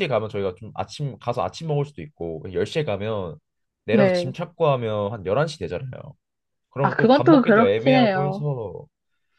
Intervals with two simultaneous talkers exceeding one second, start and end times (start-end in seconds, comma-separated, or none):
6.8-8.4